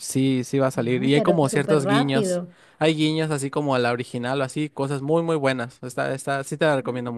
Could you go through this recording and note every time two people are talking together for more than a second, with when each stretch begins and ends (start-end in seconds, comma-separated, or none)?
0.9-2.4